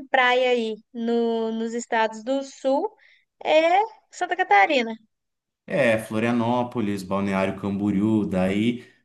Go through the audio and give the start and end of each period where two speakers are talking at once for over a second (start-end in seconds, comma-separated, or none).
none